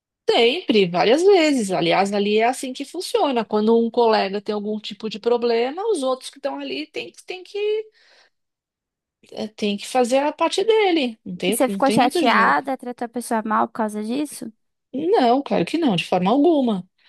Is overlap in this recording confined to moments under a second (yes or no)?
no